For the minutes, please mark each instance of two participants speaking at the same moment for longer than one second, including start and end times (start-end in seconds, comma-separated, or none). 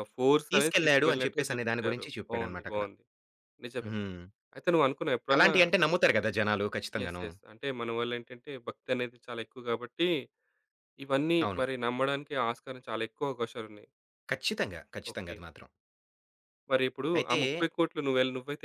0.5-2.8